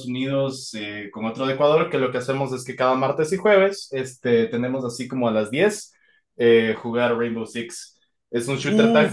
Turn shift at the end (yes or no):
yes